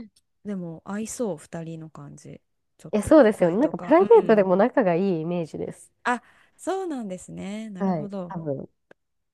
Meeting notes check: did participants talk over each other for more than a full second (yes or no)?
yes